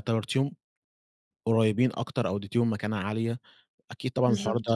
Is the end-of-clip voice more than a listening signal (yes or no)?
no